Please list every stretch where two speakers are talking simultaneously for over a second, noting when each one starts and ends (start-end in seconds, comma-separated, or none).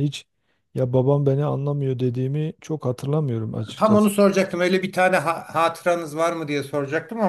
none